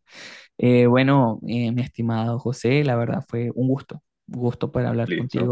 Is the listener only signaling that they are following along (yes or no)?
yes